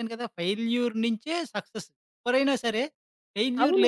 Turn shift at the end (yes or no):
yes